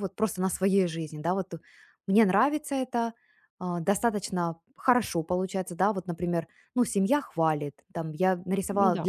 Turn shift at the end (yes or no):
no